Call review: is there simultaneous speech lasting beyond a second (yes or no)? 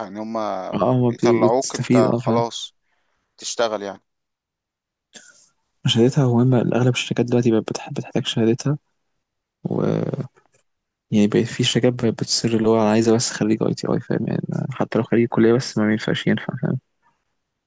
yes